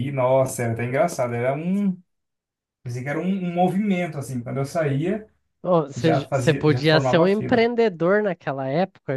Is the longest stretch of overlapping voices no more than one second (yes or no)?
no